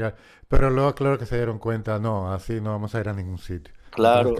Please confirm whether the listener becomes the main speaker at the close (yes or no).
no